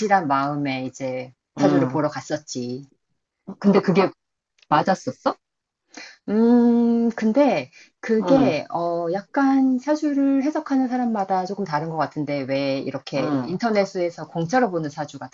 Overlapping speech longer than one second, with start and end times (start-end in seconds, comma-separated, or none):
none